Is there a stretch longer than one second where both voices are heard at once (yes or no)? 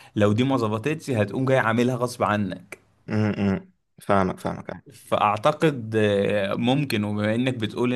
no